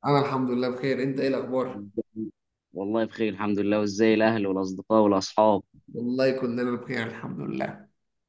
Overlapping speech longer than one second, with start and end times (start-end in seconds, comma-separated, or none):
none